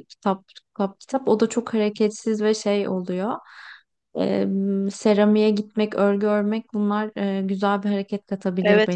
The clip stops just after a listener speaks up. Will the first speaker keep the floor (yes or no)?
no